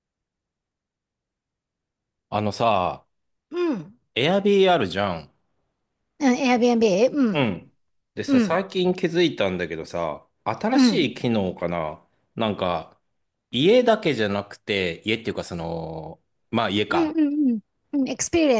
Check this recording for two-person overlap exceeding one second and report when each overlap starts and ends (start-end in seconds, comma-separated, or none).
none